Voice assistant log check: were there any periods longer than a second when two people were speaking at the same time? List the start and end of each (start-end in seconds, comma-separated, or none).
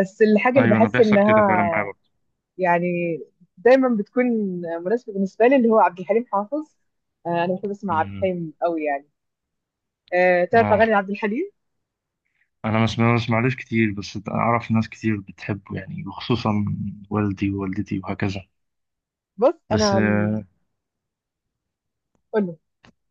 0.6-1.9